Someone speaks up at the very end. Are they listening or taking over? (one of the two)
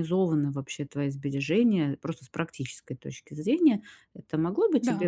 listening